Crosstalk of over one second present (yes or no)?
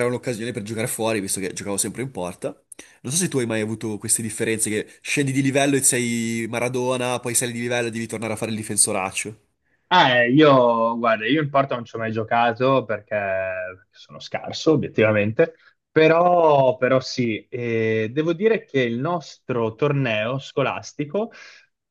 no